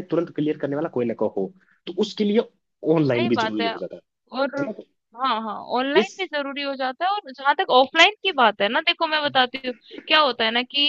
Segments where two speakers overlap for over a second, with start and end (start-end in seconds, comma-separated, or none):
none